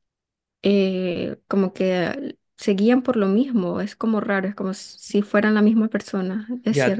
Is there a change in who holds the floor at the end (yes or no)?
yes